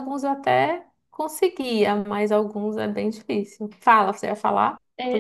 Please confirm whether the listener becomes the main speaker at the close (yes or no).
yes